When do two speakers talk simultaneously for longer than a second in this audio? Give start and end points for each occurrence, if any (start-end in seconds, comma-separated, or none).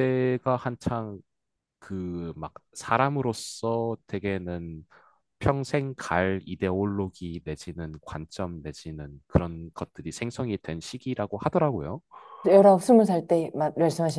none